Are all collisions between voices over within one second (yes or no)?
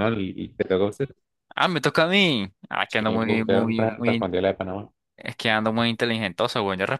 no